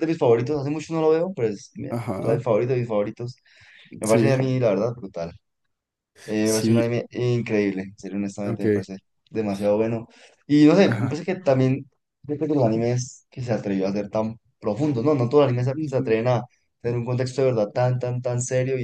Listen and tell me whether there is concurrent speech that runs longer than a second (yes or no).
no